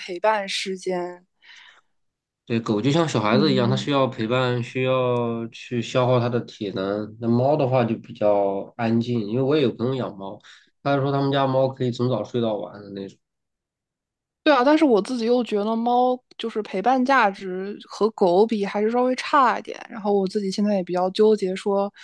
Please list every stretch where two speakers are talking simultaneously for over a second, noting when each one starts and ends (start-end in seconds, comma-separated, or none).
none